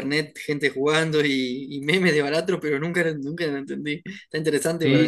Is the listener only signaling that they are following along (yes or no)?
no